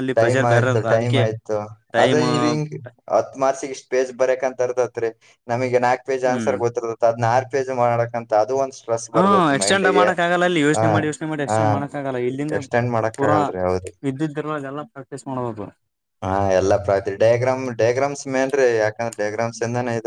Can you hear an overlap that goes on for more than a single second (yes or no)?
no